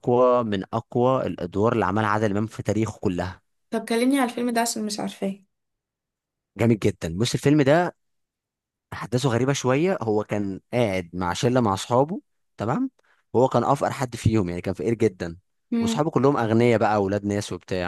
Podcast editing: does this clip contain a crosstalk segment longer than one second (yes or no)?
no